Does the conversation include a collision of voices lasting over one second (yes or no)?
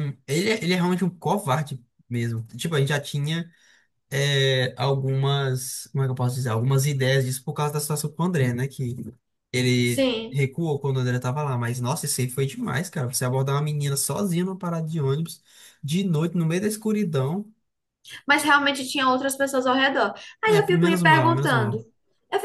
yes